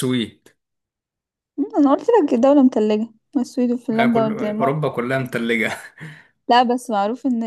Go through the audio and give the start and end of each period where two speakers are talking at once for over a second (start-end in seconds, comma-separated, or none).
3.9-5.3